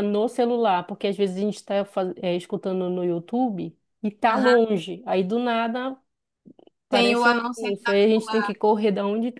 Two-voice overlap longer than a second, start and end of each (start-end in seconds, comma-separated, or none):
6.9-8.5